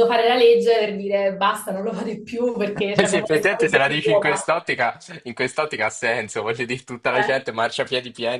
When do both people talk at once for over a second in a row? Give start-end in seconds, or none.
3.0-4.4